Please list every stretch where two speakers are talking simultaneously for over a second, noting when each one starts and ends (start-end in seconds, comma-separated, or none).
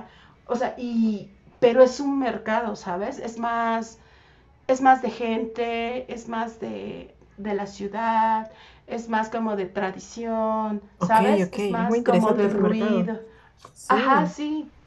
11.0-13.1